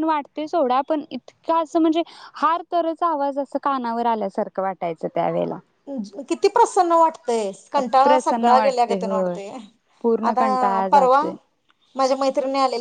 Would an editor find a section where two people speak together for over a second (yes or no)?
yes